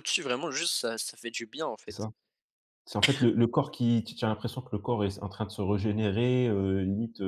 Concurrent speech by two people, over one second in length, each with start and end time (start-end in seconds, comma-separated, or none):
none